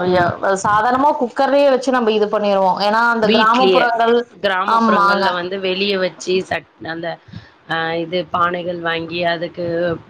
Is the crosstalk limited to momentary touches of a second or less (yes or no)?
yes